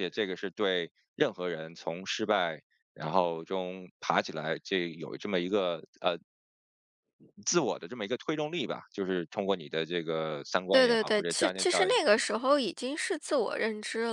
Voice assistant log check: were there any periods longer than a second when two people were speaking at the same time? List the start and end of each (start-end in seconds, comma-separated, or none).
10.7-11.9